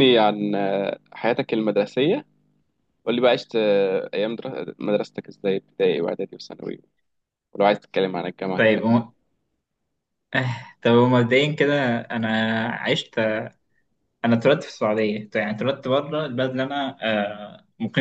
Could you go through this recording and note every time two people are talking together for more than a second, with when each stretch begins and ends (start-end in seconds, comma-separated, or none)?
none